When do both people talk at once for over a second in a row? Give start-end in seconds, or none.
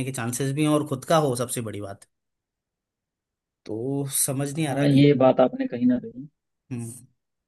none